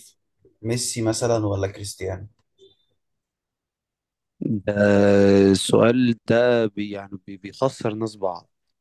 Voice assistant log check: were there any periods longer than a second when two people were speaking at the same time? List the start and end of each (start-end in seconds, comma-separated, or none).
none